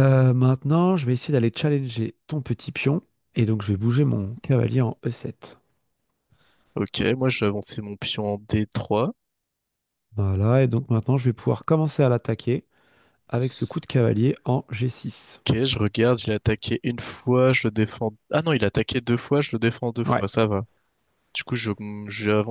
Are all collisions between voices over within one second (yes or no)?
yes